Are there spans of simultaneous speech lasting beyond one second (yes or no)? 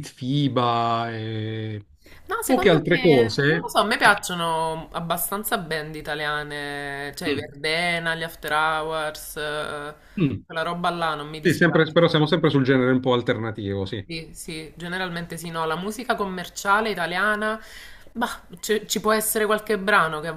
yes